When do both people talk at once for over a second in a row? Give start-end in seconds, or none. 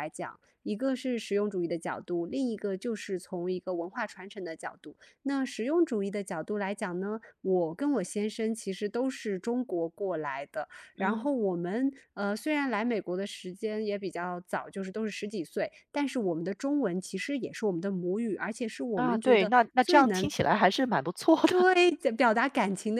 18.9-20.3